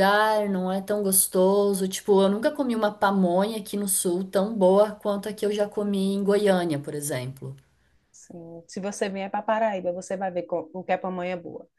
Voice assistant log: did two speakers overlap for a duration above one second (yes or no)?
no